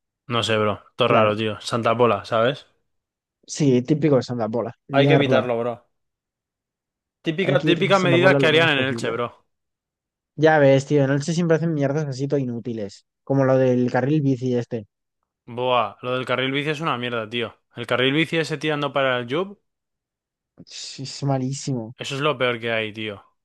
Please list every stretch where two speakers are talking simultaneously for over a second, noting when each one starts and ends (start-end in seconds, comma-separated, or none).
7.4-9.2